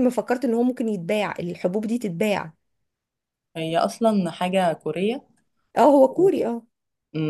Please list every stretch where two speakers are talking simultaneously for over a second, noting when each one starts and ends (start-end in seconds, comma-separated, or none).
none